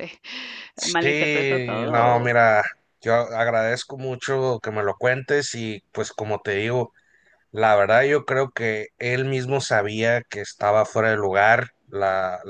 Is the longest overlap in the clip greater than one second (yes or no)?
yes